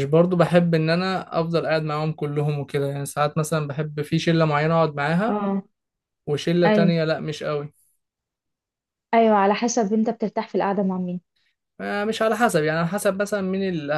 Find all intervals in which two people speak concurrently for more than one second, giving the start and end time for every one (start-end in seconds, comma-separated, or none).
none